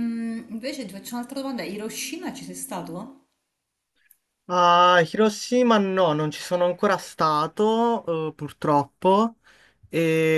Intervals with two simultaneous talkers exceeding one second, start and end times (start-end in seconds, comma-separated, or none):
none